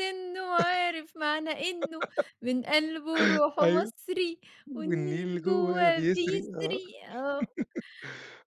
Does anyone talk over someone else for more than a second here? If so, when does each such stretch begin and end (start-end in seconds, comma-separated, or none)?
4.7-6.8